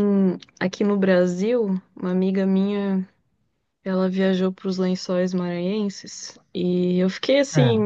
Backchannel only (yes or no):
yes